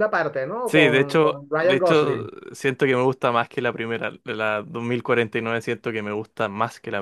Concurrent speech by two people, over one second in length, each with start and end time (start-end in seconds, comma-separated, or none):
0.7-2.3